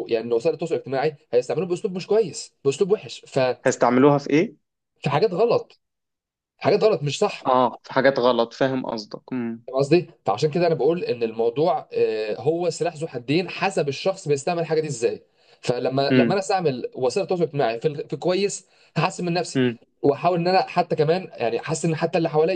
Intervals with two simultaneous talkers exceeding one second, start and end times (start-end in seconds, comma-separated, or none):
none